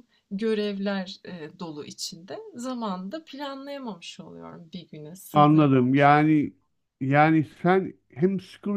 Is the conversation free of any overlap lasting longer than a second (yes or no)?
no